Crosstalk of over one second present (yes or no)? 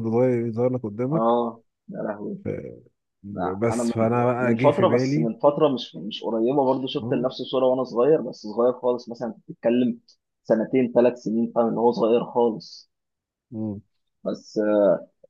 yes